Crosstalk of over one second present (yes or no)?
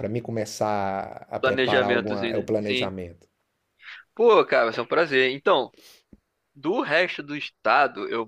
yes